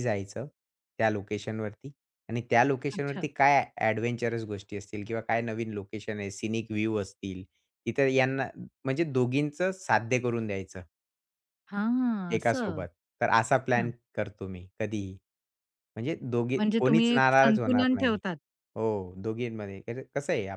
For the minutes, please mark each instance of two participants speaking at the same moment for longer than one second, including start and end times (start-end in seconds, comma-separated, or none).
16.6-18.2